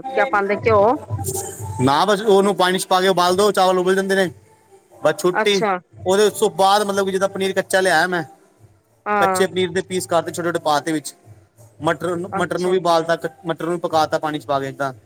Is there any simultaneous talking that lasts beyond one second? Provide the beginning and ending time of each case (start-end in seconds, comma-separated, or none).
none